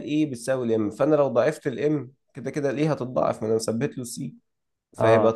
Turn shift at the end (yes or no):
no